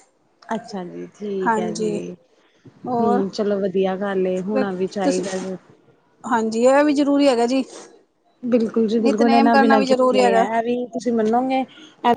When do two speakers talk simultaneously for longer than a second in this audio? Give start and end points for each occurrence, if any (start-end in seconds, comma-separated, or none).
9.0-10.4